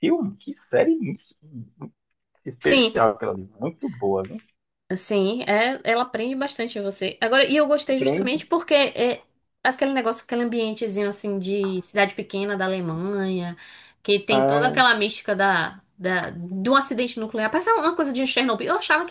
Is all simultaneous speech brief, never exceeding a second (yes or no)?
yes